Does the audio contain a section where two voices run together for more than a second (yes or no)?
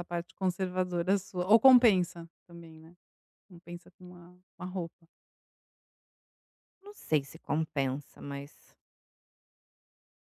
no